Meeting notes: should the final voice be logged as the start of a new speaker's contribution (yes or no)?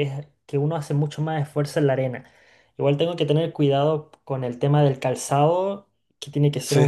no